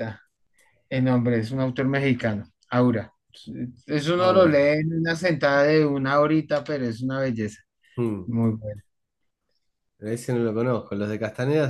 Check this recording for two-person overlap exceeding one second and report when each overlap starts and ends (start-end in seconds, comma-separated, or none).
none